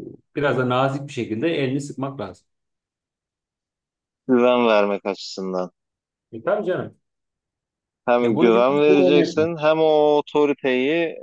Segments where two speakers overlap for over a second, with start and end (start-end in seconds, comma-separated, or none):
8.2-9.5